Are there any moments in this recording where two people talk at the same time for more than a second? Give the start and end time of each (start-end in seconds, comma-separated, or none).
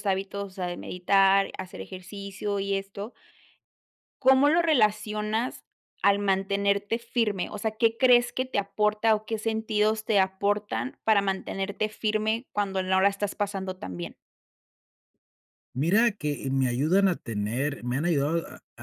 none